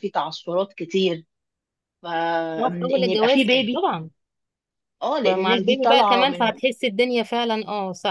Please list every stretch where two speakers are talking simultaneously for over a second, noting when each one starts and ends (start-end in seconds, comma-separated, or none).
2.6-3.8, 5.2-6.6